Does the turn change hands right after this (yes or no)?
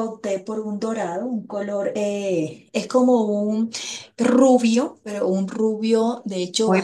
yes